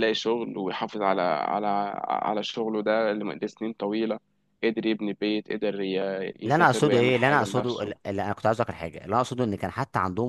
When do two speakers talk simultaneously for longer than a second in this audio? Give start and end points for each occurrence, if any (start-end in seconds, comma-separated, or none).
6.4-7.9